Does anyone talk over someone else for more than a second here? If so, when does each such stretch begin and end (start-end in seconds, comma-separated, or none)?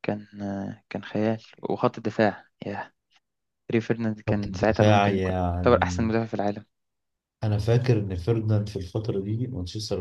4.3-6.1